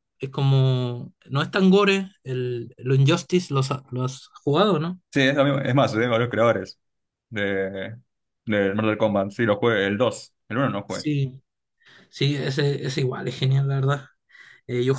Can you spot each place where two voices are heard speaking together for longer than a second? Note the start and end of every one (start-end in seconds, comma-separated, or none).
none